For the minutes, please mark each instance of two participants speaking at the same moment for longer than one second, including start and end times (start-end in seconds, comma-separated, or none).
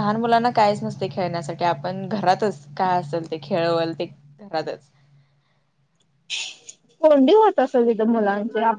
none